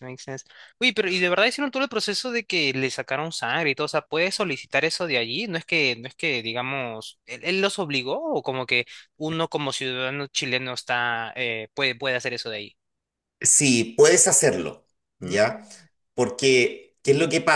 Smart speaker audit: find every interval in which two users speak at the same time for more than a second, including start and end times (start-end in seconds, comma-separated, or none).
none